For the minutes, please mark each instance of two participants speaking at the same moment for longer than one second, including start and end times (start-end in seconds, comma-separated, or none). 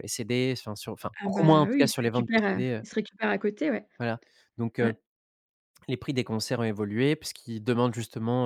1.2-2.8